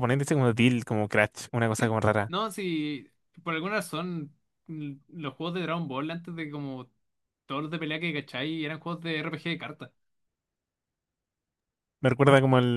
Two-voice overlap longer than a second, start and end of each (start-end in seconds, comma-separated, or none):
none